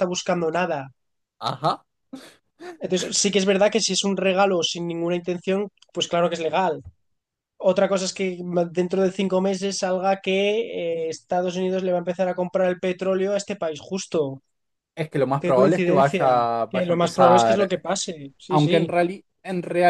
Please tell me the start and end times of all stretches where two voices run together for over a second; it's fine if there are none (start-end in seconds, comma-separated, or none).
15.4-17.8